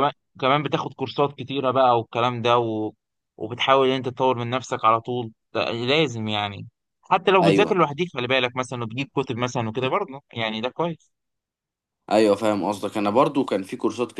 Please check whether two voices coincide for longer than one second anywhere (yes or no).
no